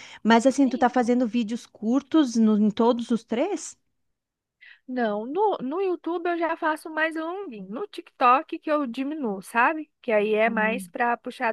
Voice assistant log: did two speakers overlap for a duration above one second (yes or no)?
no